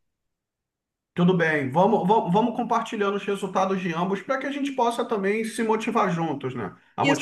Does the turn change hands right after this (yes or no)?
yes